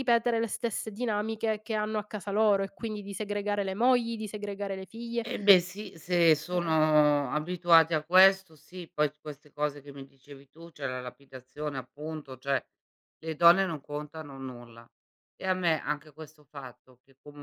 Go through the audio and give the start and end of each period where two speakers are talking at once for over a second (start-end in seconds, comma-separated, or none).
none